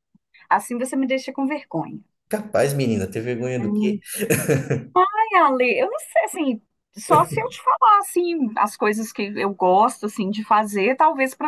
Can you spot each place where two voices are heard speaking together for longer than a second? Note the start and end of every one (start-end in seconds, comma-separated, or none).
none